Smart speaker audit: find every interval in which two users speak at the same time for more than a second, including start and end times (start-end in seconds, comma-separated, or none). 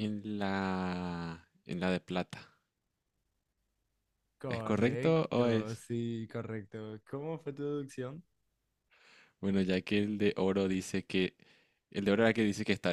4.5-5.8